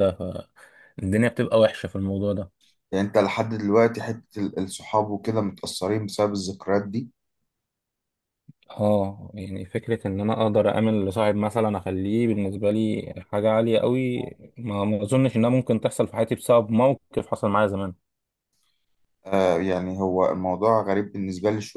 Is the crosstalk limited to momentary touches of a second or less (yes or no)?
yes